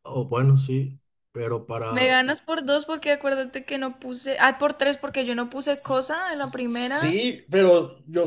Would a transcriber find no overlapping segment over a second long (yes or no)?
no